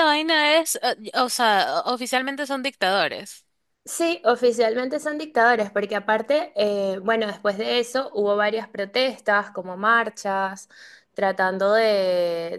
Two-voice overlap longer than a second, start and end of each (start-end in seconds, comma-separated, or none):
none